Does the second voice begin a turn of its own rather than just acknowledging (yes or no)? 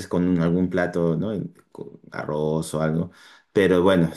no